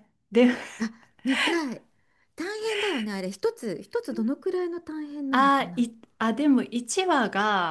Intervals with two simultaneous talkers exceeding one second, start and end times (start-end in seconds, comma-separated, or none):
none